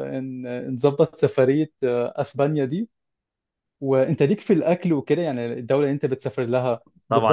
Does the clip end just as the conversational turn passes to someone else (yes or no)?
yes